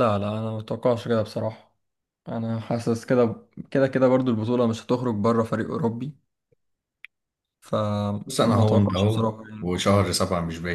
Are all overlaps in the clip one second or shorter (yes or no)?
no